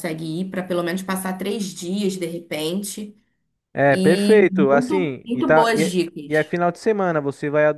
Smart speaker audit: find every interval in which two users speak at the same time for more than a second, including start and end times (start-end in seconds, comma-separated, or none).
3.9-6.5